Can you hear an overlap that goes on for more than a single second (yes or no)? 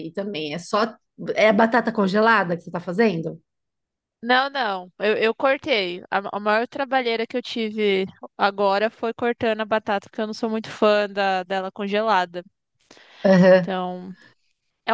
no